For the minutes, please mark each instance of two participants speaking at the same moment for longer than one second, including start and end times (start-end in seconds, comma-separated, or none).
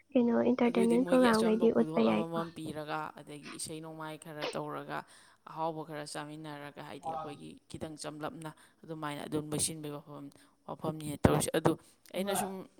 0.7-2.4